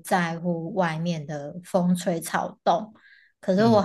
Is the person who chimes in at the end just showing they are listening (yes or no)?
yes